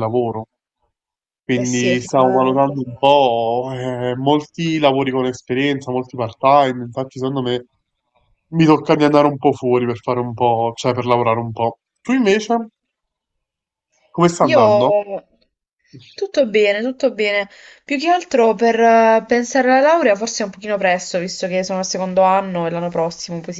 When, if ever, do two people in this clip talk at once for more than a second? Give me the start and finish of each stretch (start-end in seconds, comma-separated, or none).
1.5-2.9